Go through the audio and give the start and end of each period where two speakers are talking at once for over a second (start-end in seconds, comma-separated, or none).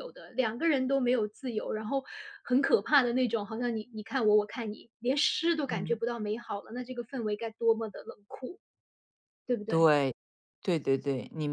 none